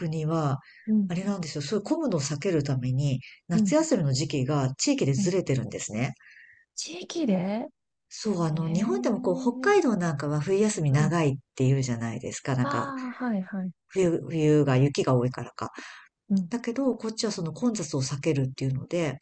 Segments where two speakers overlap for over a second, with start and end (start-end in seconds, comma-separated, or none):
8.5-9.7